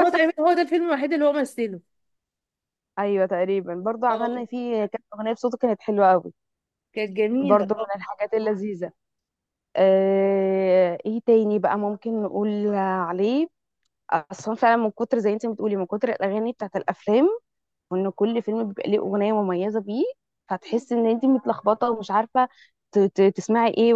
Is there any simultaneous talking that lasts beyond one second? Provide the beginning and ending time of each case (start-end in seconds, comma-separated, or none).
none